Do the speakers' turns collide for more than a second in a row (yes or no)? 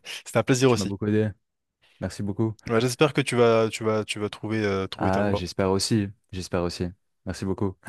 no